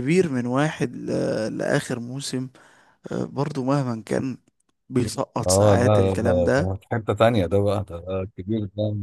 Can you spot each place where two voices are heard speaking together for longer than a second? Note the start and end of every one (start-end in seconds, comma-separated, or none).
5.4-6.7